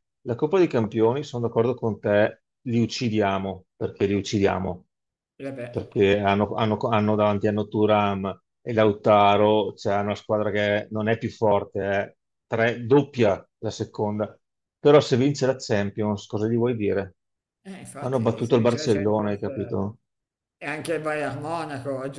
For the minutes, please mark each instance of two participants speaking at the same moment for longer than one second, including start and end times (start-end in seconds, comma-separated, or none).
18.0-19.8